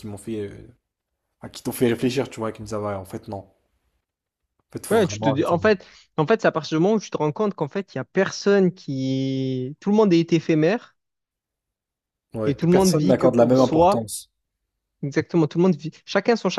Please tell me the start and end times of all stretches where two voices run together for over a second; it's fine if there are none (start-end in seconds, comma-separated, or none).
12.5-14.0